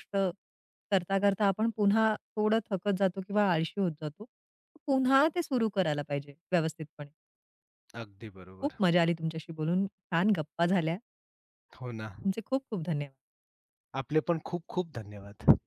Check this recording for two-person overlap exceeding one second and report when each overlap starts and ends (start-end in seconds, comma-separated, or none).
none